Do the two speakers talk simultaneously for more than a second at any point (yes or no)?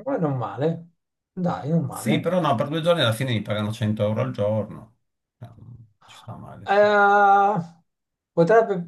no